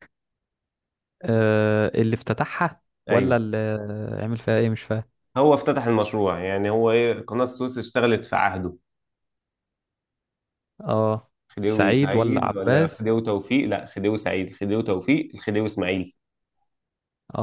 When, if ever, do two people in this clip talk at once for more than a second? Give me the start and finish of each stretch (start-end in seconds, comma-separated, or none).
11.7-13.1